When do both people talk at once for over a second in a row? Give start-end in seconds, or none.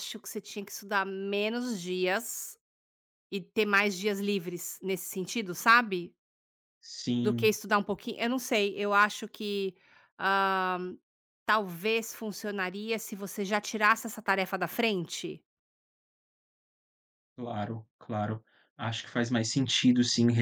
none